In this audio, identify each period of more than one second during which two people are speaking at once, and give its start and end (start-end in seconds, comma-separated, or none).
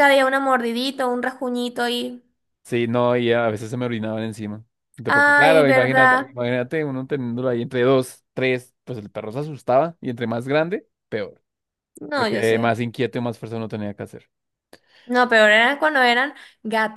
5.1-6.3